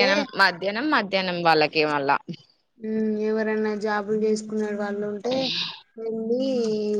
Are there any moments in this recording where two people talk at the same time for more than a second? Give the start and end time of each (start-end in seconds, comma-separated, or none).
none